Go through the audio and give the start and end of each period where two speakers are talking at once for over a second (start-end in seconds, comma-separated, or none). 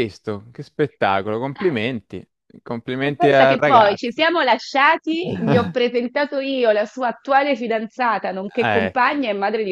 3.0-4.3